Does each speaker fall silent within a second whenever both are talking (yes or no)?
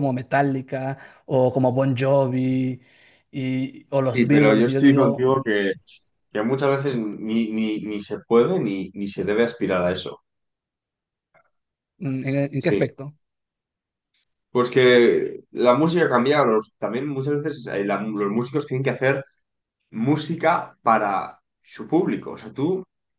no